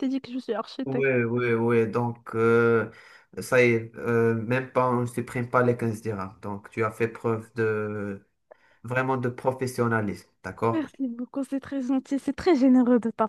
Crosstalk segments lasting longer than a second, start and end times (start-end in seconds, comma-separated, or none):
none